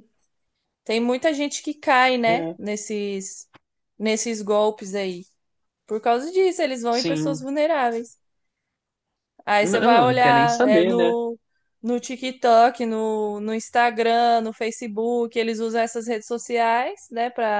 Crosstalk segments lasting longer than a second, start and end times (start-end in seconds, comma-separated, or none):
9.6-11.1